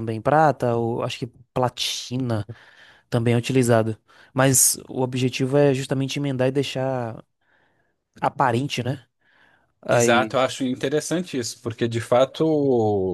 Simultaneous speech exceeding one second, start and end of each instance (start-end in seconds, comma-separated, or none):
none